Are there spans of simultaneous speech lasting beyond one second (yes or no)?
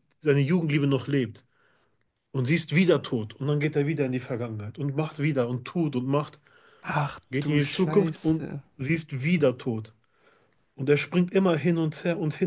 yes